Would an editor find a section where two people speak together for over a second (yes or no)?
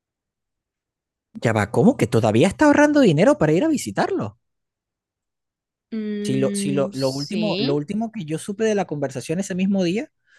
yes